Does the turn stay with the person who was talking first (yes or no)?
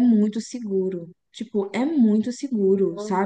yes